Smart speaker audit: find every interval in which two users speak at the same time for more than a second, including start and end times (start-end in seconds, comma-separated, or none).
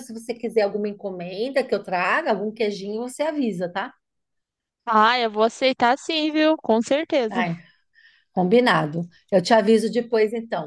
none